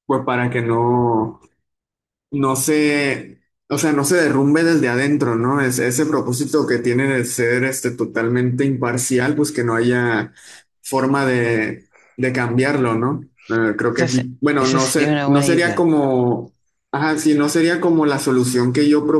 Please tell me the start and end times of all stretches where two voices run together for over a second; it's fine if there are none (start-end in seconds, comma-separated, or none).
13.9-15.9